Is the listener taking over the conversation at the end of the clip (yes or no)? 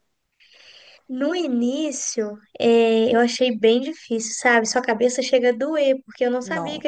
no